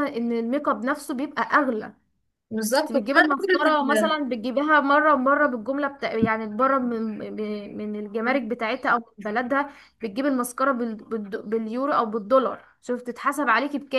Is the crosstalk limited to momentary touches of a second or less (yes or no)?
no